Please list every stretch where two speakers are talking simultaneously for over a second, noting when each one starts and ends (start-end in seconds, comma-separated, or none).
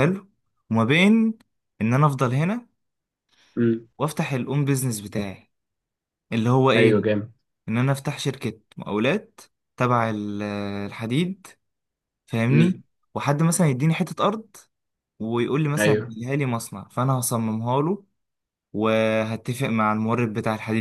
none